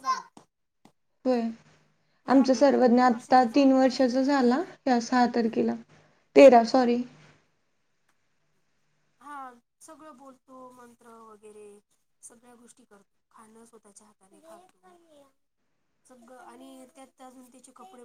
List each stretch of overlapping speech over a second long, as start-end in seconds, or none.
2.3-3.7